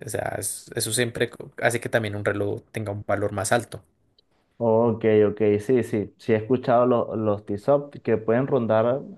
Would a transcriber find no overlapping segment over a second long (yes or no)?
yes